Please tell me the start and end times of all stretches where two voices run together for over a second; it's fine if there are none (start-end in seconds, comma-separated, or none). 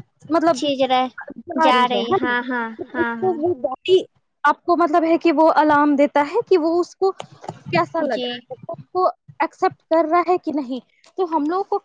none